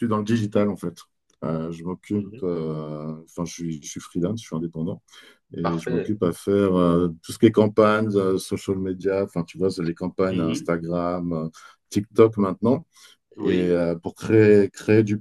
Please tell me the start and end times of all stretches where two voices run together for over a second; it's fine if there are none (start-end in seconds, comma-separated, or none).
none